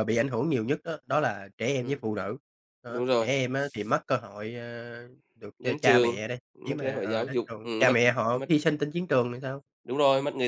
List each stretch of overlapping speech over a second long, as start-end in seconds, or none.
5.6-8.5